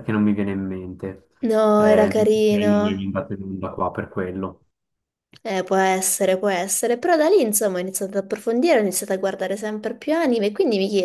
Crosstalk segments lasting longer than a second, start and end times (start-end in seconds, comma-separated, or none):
1.8-3.1